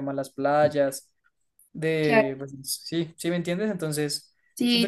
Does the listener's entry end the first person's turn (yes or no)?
yes